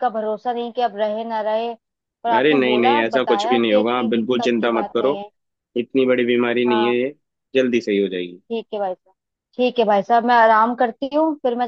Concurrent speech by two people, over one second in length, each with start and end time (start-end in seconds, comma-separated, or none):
2.4-5.1